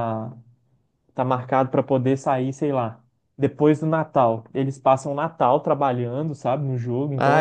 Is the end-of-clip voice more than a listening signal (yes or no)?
yes